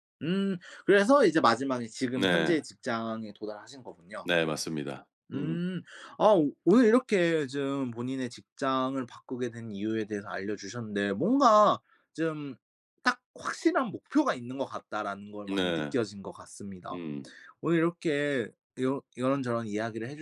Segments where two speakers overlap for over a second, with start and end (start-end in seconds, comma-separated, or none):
none